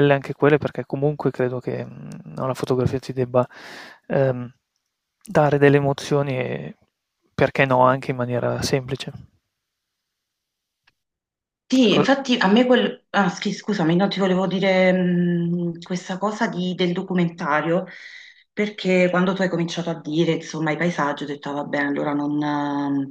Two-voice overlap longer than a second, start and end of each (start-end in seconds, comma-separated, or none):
none